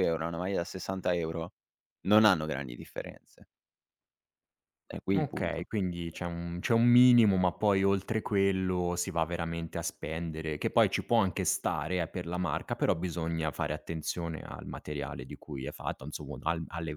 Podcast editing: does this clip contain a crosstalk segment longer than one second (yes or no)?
no